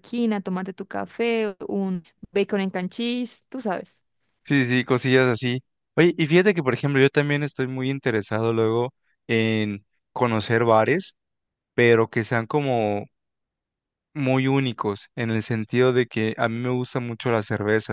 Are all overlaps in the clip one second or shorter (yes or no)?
yes